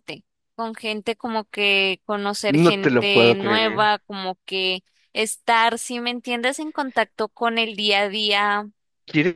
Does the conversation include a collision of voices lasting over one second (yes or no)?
yes